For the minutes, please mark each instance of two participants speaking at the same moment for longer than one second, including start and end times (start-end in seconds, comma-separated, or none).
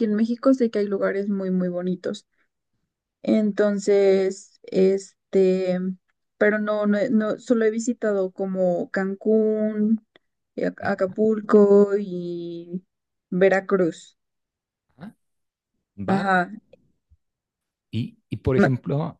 none